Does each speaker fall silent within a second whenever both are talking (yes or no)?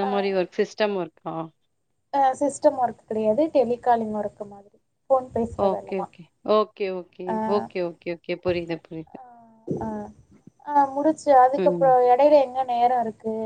yes